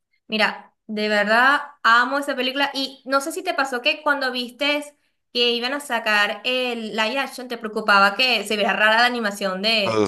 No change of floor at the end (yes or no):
no